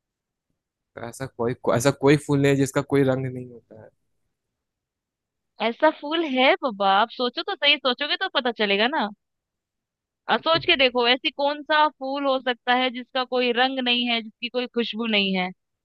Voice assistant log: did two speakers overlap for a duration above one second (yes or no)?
no